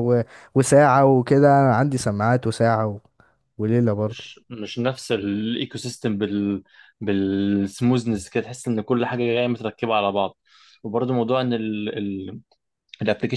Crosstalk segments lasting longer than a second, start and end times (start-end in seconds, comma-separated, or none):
none